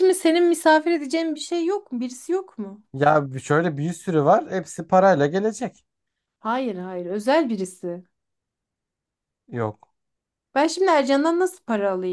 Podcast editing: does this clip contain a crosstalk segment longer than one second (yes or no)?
no